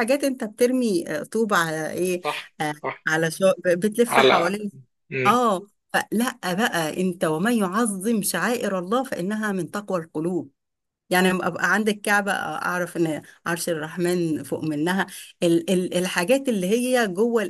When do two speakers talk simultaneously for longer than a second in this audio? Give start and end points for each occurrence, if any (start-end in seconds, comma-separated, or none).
none